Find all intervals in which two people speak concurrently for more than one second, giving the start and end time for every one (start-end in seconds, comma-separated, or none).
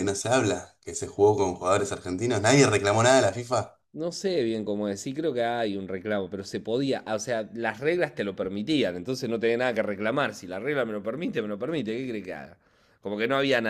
none